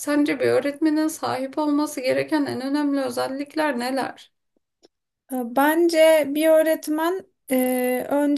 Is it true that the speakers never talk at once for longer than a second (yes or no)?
yes